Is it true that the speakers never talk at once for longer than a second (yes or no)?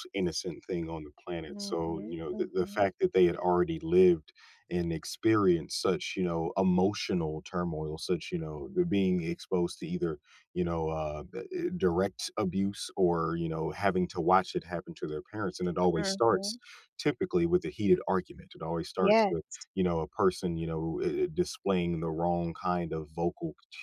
no